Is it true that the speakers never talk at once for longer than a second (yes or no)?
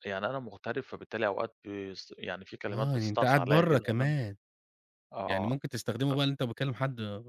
no